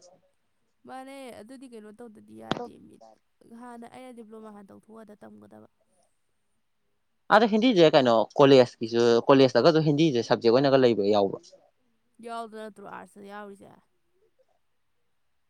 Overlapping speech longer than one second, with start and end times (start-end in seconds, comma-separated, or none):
none